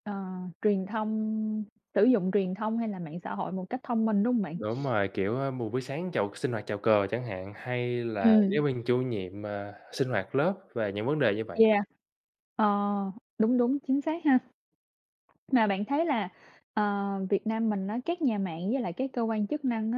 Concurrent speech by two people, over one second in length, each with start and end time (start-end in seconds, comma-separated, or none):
none